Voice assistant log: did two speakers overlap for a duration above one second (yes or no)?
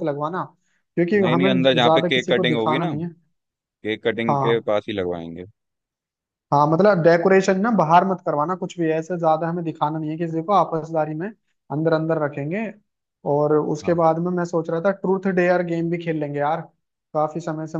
yes